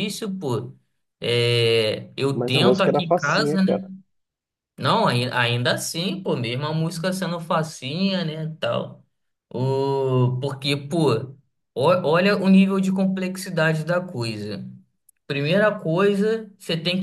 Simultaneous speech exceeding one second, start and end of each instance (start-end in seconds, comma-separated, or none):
2.3-3.8